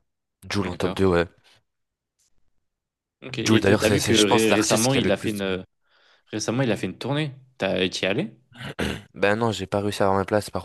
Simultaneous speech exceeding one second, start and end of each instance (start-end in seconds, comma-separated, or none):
3.4-5.6